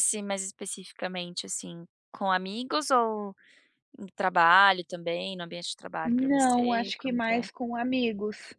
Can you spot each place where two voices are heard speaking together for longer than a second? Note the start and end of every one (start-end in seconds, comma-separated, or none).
6.0-7.5